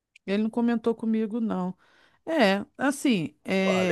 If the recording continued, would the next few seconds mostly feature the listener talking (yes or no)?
yes